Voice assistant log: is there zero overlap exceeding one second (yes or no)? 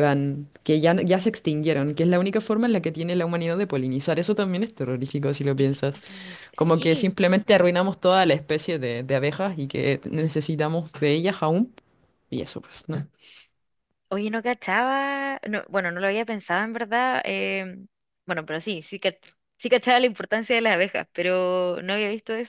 yes